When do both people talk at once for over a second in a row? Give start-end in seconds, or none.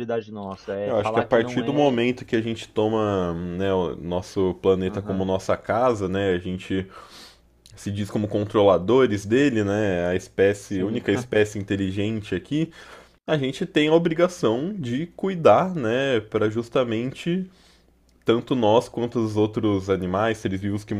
0.8-2.1